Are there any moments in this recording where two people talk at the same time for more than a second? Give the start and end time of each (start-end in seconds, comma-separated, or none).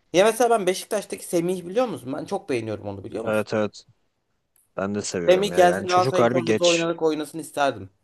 5.3-6.9